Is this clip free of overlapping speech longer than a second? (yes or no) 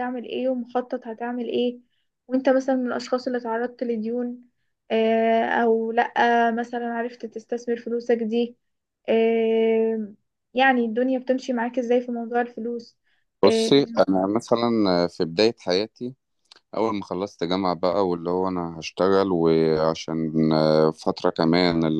yes